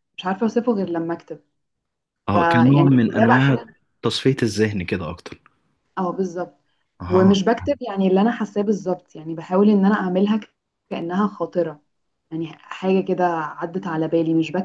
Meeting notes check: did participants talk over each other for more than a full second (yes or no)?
yes